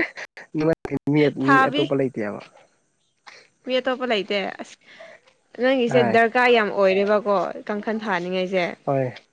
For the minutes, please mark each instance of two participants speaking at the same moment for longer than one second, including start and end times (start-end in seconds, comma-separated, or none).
none